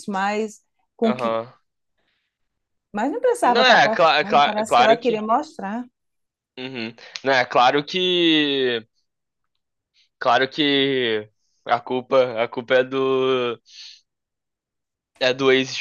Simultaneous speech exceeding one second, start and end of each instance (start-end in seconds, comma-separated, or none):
3.4-5.2